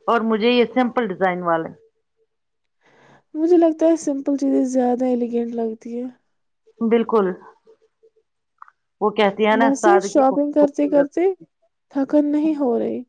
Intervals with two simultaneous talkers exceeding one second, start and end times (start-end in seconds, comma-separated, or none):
9.6-11.1